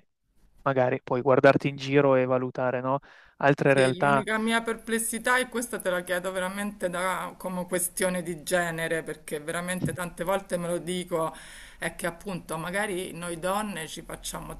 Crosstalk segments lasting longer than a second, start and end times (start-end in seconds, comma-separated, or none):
none